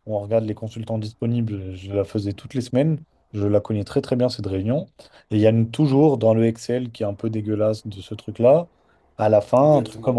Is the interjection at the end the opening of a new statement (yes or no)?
no